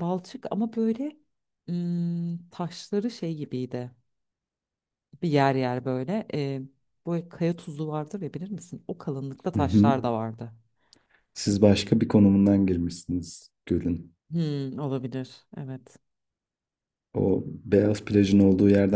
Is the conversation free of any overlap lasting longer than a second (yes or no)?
yes